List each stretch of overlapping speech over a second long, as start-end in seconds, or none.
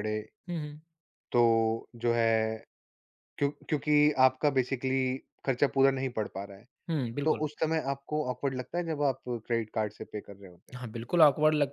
none